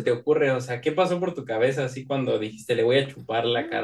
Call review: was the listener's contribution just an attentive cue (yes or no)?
no